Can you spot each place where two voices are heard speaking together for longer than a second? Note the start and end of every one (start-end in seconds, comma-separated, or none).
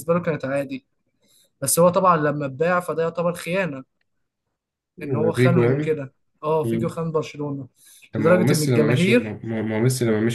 8.2-9.4